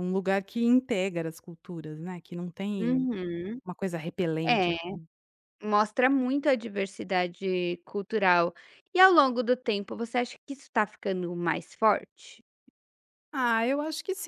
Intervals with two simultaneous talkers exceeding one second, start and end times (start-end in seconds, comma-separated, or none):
none